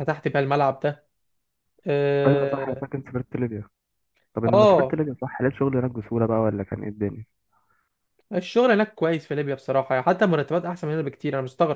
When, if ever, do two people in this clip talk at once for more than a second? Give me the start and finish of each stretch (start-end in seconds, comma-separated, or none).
none